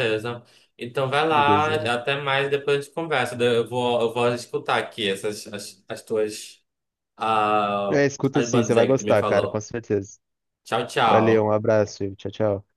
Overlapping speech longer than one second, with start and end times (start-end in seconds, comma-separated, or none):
7.9-9.7